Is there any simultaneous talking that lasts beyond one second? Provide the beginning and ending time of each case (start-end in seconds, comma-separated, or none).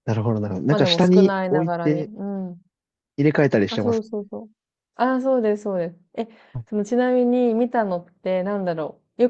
0.7-2.1